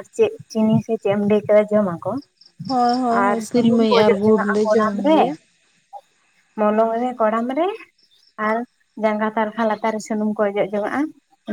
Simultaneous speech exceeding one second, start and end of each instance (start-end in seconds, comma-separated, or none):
3.2-5.2